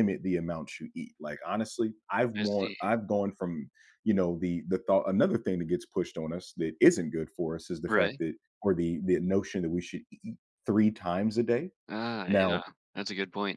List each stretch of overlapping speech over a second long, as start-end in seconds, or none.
none